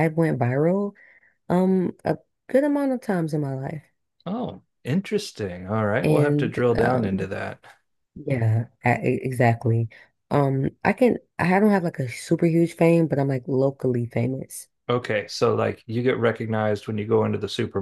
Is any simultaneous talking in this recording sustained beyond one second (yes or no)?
yes